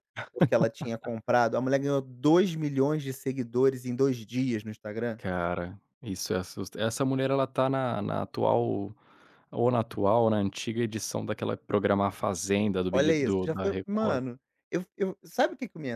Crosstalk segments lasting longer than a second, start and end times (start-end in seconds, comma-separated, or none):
12.9-14.2